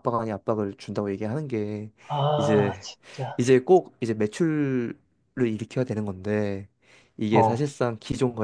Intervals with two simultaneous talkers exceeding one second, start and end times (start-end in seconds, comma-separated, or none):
none